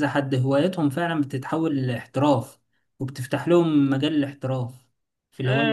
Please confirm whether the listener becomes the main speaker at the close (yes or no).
yes